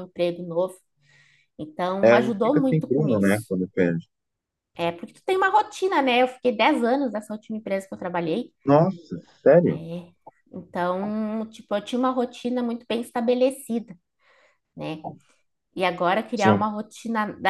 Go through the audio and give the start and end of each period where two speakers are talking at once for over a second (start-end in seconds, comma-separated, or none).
2.0-3.5